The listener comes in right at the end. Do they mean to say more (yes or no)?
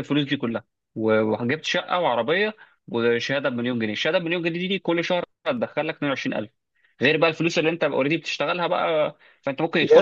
yes